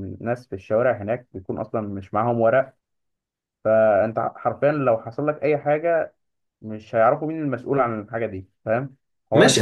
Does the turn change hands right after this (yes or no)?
yes